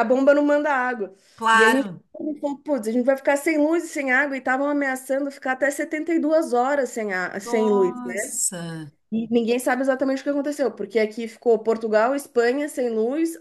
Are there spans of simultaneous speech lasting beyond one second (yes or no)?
no